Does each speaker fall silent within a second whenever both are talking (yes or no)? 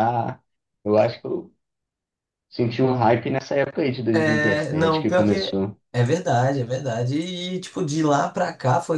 no